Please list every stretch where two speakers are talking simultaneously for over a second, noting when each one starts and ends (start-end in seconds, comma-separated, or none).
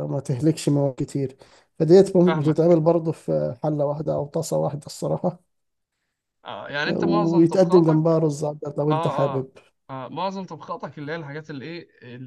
7.0-8.2